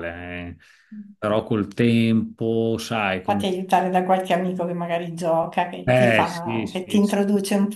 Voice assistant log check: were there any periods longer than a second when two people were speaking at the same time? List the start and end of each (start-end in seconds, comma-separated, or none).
5.8-7.2